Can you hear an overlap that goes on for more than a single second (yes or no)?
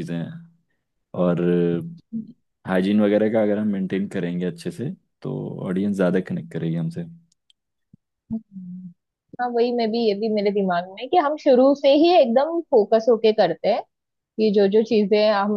no